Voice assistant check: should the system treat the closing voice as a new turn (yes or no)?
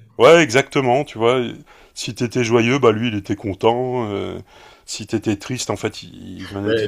no